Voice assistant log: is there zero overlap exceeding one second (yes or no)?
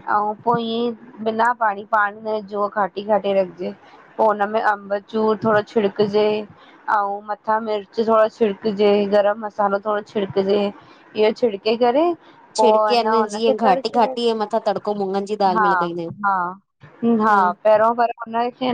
no